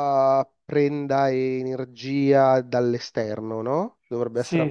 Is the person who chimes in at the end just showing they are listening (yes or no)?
no